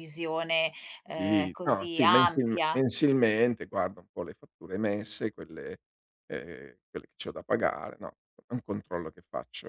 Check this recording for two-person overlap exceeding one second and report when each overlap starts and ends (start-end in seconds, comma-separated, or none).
1.1-2.8